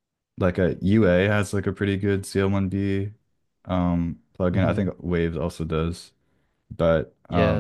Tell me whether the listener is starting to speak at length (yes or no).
yes